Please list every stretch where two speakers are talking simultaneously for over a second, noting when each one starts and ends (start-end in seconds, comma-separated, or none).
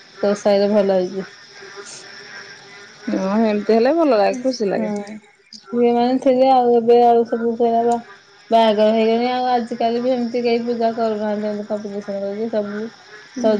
none